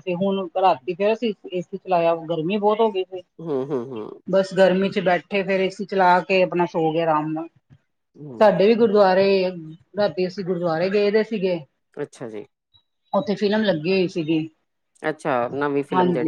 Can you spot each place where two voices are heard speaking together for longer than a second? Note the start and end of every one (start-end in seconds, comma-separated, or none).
none